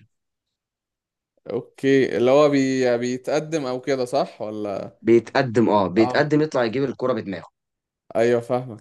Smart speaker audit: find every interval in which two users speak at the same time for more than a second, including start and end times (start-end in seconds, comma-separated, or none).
none